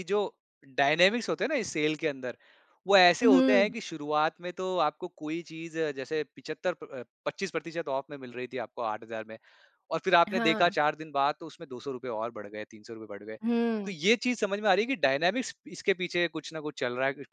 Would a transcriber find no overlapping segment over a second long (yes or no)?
yes